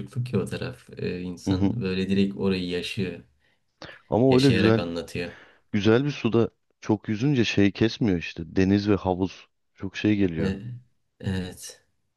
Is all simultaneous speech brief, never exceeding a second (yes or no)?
yes